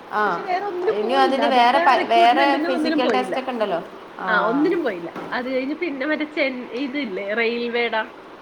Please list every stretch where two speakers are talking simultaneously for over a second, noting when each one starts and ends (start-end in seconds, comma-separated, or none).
1.0-3.4